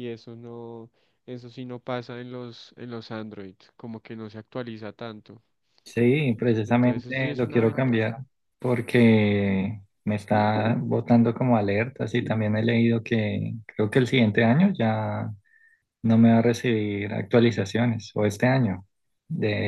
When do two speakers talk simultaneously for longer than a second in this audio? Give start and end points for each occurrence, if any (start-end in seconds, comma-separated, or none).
6.7-8.1